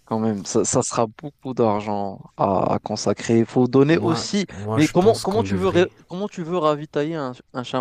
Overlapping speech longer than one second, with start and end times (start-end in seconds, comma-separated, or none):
3.9-5.9